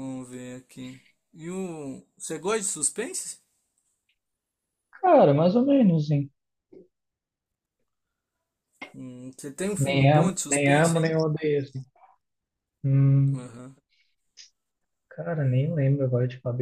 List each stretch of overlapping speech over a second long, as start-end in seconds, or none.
9.8-11.1